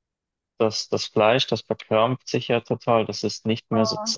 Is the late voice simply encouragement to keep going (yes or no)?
yes